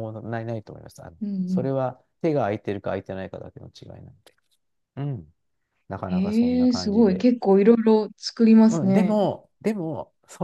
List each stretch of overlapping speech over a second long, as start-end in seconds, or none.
6.0-7.2